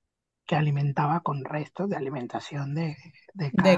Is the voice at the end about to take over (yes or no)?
yes